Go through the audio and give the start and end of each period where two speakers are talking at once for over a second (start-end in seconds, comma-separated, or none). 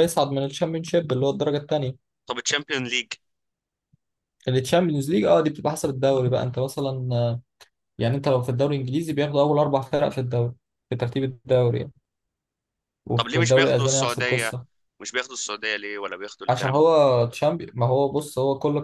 13.1-14.6